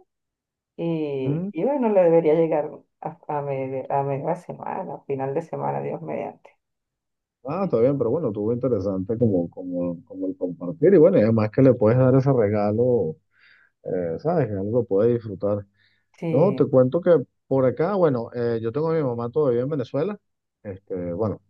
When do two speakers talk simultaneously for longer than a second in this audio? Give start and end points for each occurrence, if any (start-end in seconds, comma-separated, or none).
none